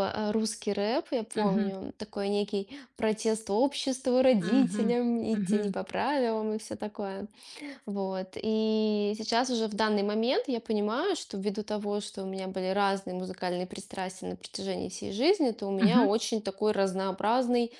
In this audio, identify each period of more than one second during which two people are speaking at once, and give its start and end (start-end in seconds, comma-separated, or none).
4.4-5.8